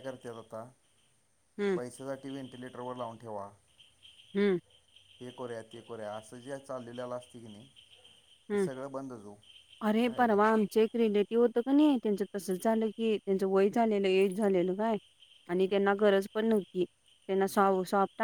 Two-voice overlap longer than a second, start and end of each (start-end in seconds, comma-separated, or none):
none